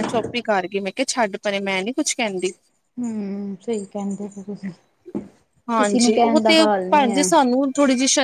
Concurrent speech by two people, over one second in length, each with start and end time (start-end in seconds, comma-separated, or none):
5.8-7.3